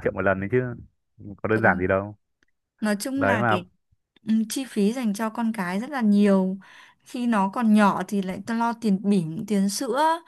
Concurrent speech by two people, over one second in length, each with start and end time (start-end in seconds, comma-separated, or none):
none